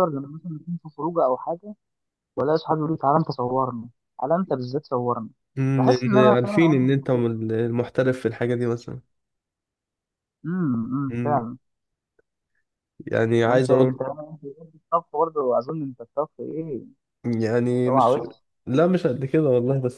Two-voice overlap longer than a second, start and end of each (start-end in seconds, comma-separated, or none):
5.8-7.2